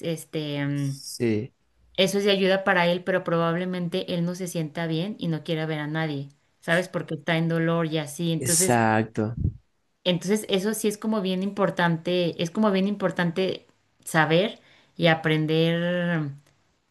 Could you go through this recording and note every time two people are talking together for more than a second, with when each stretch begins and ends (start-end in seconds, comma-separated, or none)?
none